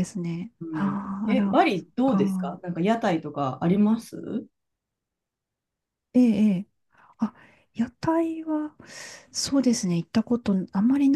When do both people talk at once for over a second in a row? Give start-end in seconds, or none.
0.6-2.6